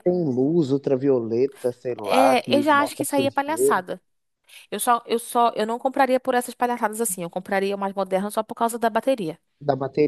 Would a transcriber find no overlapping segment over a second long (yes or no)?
no